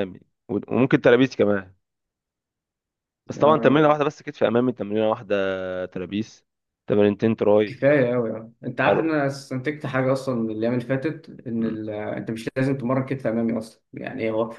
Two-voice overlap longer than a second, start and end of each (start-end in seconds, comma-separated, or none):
none